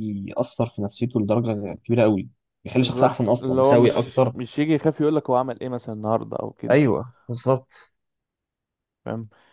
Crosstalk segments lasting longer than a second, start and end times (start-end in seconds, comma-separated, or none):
2.8-4.3